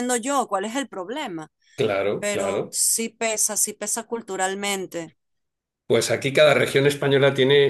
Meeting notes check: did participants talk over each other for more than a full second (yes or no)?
no